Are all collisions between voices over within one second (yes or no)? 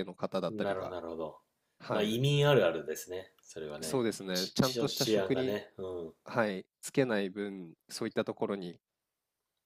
no